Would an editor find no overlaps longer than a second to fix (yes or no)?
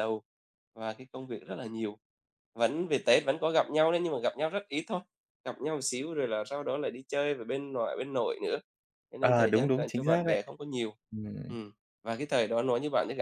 no